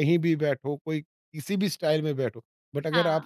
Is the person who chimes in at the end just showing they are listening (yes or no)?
yes